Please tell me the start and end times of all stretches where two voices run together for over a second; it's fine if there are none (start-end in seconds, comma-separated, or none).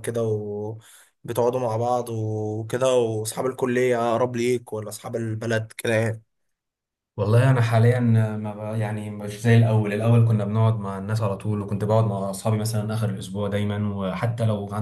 none